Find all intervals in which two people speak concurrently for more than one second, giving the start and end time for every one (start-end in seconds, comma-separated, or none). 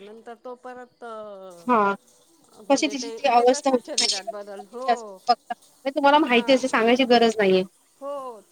2.7-4.8